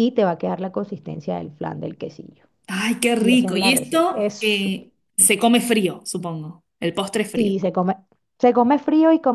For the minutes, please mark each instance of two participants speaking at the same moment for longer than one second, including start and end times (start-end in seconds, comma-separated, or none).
3.2-4.9